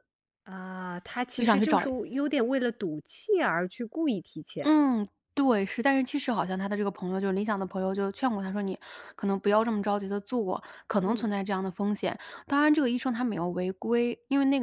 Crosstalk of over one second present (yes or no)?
no